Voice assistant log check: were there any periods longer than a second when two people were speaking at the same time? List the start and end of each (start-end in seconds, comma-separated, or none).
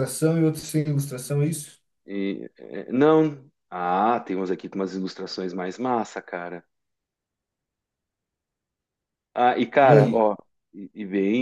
none